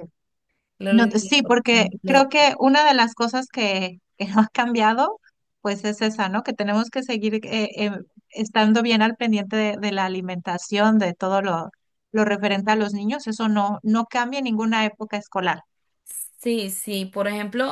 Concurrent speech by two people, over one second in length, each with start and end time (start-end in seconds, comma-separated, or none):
0.9-2.3